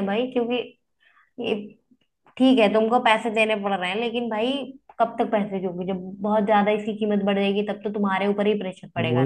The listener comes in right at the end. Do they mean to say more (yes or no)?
yes